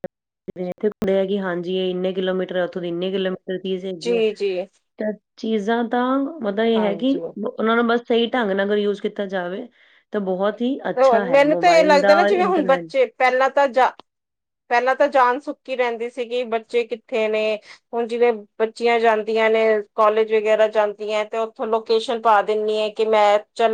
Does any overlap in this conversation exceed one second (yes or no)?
yes